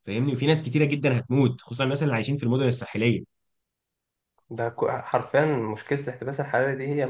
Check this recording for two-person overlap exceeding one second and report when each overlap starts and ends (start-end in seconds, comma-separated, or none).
none